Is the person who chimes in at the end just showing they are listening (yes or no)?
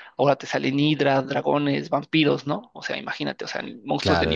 no